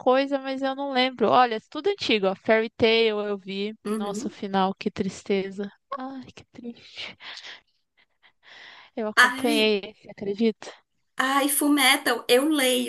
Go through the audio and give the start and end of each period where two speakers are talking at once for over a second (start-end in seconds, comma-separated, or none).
none